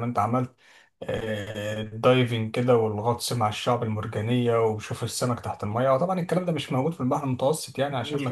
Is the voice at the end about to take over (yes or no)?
no